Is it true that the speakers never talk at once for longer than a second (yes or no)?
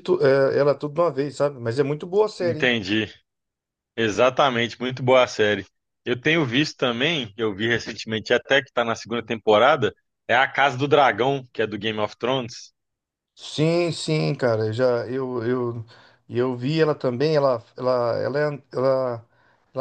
yes